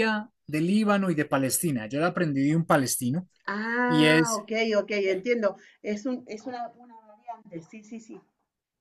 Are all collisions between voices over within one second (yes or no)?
yes